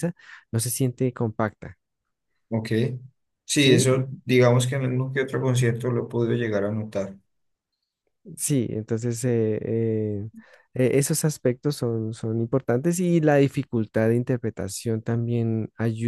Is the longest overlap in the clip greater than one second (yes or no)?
no